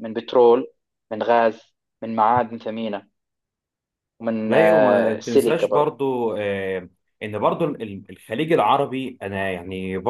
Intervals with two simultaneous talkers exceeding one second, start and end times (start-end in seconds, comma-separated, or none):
4.5-6.0